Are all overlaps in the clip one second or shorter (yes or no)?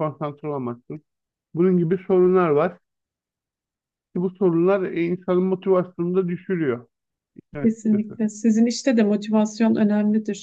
yes